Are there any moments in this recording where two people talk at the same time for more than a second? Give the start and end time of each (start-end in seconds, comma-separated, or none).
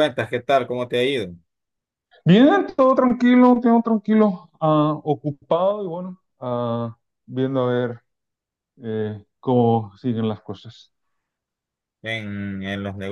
none